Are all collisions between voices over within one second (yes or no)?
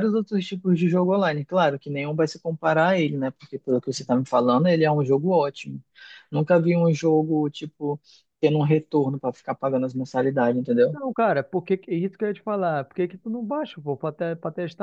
yes